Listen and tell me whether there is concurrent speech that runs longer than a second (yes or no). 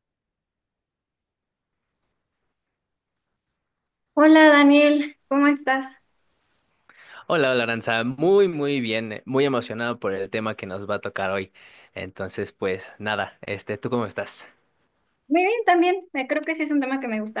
no